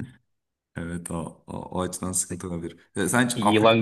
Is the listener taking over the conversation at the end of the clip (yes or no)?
no